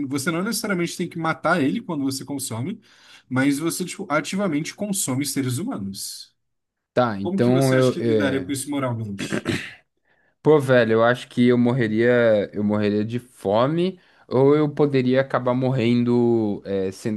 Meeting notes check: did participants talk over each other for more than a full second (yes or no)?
yes